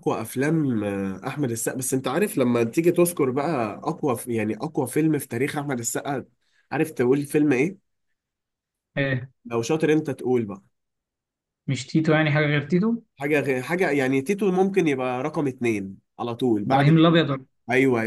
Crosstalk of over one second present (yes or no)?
no